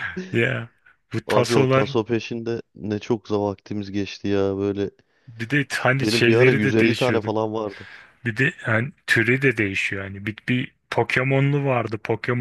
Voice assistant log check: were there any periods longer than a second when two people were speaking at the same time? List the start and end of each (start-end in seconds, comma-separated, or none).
6.0-7.3